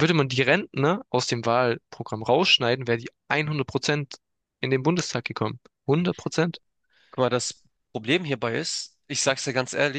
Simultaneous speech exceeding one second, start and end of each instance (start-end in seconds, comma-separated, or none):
none